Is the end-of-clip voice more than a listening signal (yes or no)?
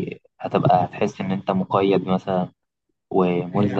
no